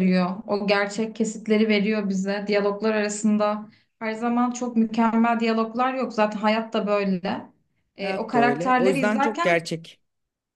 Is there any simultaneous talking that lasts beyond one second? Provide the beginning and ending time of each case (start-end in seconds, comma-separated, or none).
8.0-9.6